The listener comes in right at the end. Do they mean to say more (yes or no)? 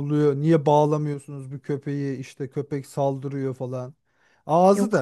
no